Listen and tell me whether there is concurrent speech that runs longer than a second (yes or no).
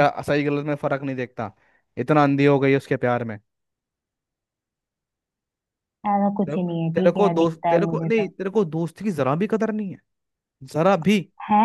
yes